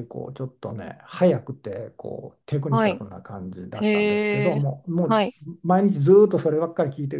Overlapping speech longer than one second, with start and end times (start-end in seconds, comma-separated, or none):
3.7-5.2